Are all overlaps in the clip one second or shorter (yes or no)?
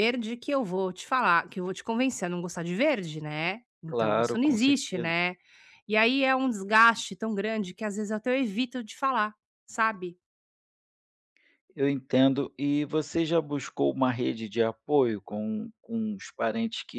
no